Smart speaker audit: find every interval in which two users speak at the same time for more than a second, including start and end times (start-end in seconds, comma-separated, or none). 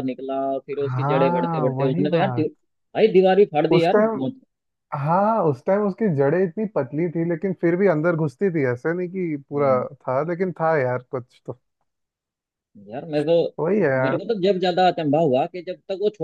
0.8-2.5